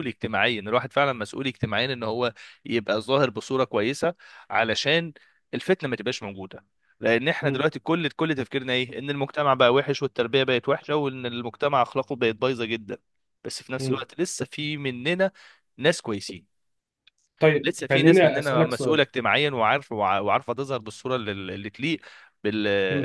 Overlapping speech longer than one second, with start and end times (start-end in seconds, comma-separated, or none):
17.6-19.0